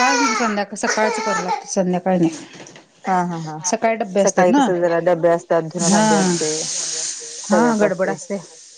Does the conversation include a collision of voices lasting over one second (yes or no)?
no